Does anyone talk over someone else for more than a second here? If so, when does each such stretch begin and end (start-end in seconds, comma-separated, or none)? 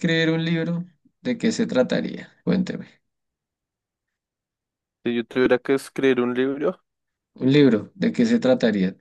none